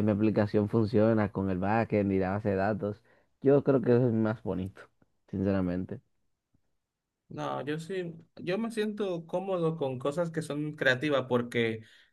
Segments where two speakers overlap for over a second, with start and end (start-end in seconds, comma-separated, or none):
none